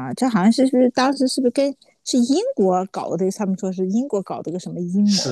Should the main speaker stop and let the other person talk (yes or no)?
yes